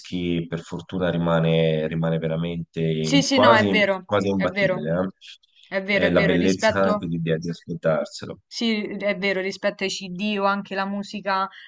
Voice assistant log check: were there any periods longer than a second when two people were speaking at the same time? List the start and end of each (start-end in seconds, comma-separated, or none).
3.0-4.9, 5.9-7.1